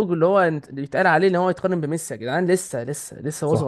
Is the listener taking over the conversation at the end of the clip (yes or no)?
yes